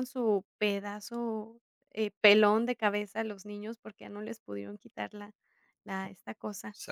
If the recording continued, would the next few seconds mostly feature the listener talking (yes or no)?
yes